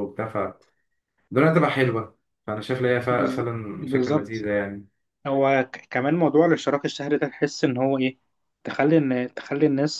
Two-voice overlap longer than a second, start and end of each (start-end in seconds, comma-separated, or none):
3.1-4.5